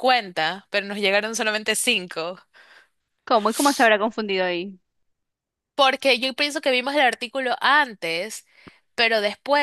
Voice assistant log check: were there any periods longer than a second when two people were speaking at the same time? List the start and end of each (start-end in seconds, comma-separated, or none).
none